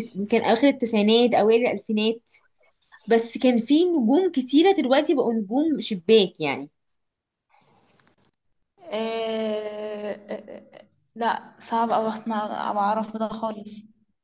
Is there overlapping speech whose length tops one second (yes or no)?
no